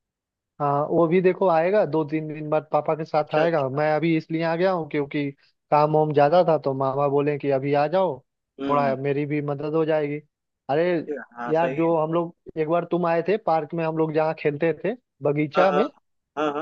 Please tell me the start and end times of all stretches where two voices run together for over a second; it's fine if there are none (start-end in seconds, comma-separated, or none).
none